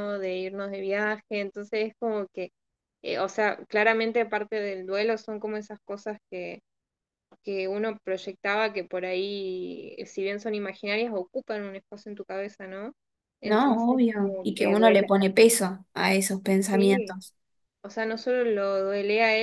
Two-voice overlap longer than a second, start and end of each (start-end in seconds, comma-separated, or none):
13.4-15.1